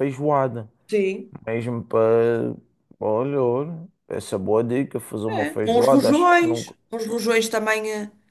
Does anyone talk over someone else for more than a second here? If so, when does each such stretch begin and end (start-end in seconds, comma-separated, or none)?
5.3-6.8